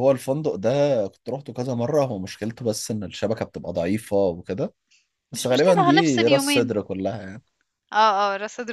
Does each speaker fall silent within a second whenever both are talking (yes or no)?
no